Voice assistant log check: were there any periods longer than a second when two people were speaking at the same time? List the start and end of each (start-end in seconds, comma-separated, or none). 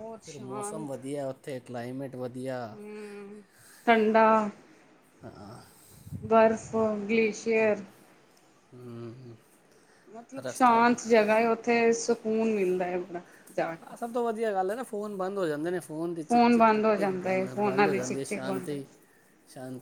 16.6-18.7